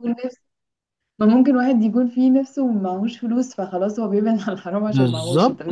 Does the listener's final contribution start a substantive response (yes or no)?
yes